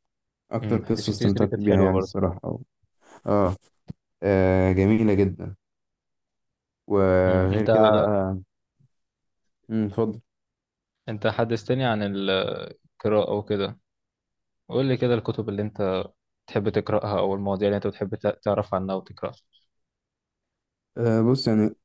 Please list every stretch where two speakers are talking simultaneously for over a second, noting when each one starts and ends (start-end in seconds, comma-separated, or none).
0.6-2.1